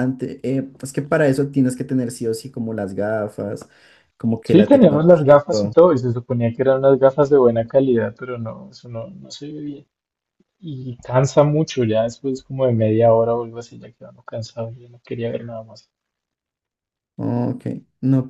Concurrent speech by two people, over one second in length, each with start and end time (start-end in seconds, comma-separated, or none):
4.4-5.8